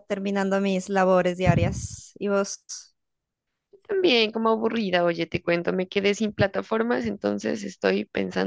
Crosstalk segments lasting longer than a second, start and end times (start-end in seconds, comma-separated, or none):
none